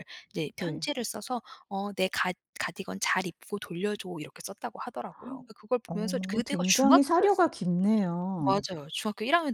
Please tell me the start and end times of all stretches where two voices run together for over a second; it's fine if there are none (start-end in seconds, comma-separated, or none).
5.9-7.5